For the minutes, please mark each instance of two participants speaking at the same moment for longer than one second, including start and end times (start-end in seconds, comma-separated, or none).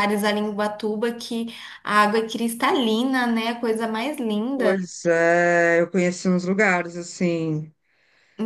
none